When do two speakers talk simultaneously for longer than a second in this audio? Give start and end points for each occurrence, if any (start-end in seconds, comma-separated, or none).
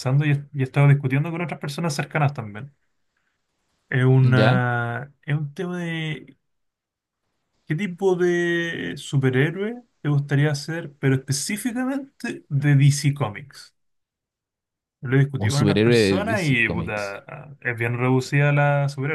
15.4-17.2